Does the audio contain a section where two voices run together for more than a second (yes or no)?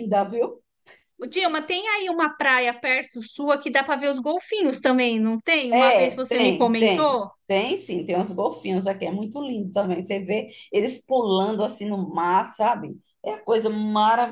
yes